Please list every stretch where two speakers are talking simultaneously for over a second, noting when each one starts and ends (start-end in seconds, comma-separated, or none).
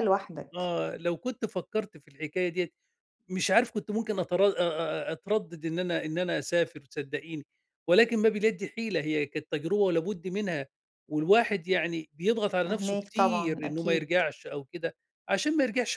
12.6-14.1